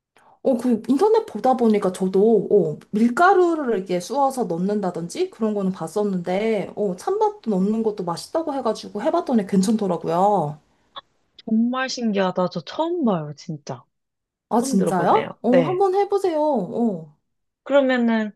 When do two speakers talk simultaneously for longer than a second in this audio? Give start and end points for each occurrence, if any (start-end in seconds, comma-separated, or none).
14.6-15.8